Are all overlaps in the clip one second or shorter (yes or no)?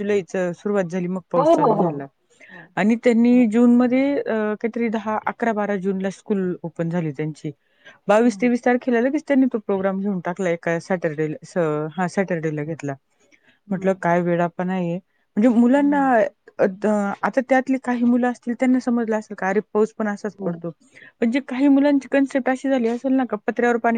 yes